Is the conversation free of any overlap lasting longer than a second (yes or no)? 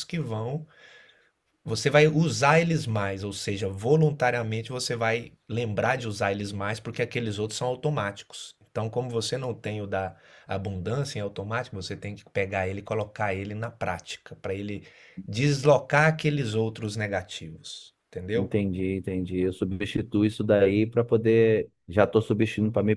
yes